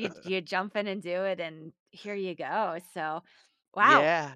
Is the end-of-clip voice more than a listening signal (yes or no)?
no